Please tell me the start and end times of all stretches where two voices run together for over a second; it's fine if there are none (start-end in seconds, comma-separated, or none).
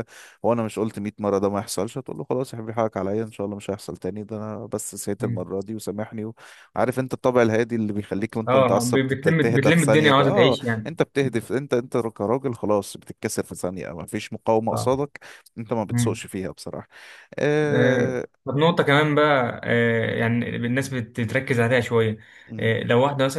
8.5-10.9